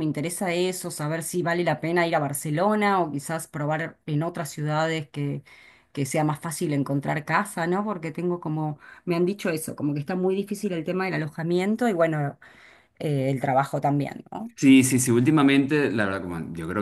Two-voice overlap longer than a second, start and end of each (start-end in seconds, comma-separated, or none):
none